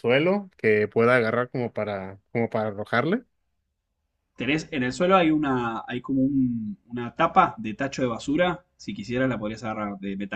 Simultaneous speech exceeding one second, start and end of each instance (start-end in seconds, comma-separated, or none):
none